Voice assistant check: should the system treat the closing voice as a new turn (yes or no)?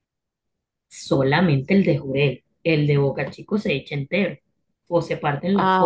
no